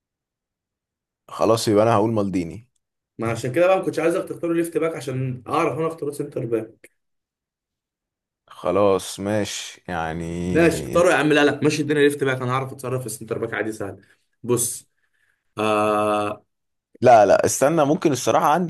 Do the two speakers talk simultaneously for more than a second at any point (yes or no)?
no